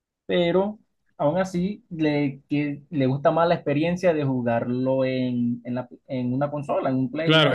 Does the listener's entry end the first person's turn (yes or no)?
yes